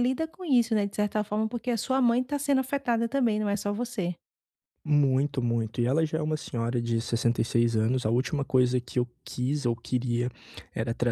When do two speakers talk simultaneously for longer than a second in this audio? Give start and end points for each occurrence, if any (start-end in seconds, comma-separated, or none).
none